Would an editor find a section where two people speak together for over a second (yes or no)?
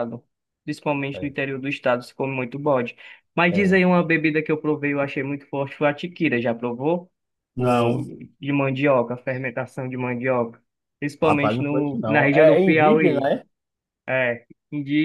yes